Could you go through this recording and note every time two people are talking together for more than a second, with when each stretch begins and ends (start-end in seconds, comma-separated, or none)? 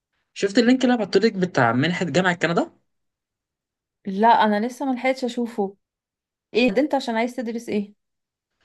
none